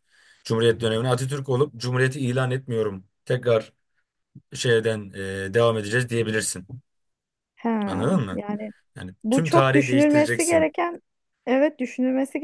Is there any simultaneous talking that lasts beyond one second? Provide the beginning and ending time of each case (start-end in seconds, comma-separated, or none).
9.2-10.7